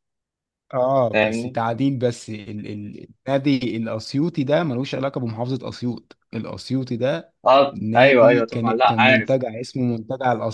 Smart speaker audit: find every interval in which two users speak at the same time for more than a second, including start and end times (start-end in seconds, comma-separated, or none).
7.7-9.4